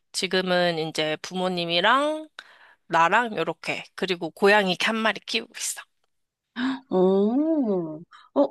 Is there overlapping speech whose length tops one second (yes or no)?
no